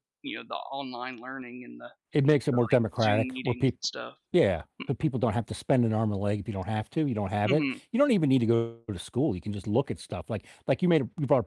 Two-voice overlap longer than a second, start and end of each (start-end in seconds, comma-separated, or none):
2.5-3.8